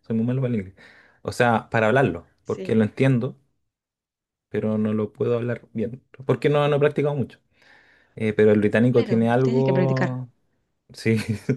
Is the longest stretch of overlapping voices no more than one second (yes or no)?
no